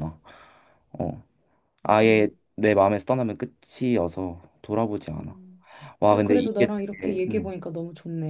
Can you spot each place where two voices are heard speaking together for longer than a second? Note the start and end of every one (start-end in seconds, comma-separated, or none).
6.1-7.5